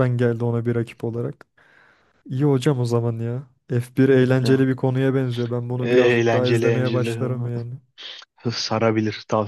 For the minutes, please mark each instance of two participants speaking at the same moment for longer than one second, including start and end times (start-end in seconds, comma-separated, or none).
5.8-7.2